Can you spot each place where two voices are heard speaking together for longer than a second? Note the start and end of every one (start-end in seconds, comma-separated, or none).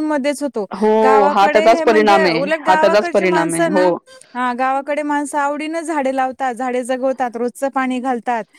1.3-3.9